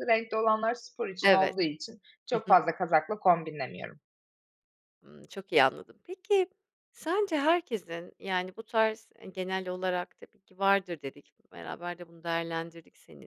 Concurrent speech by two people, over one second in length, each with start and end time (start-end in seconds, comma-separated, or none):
none